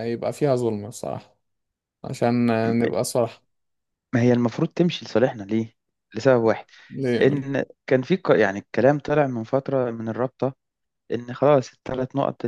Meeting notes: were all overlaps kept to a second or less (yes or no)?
yes